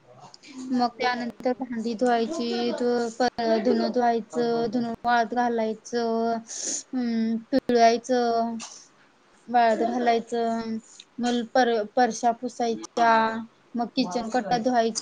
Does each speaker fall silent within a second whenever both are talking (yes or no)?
no